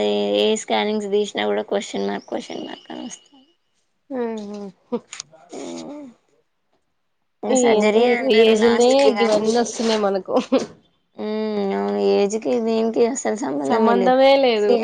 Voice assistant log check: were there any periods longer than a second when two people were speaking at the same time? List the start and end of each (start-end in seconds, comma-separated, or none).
7.7-9.4